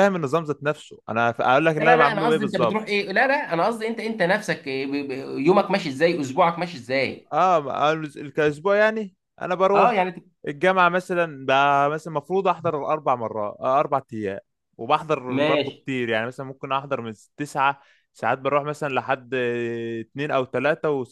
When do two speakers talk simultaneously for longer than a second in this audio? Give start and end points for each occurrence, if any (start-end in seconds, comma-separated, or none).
1.8-3.0